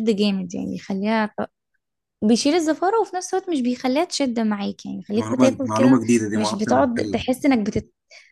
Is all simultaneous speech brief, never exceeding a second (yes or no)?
no